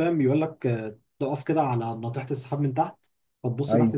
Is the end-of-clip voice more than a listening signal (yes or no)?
no